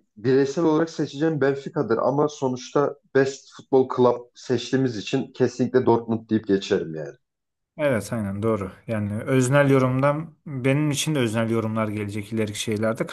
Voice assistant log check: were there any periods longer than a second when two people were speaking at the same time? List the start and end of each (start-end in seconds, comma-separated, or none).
none